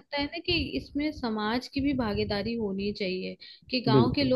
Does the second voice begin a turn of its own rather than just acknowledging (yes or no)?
no